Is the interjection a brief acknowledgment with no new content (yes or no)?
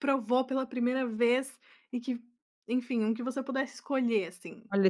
no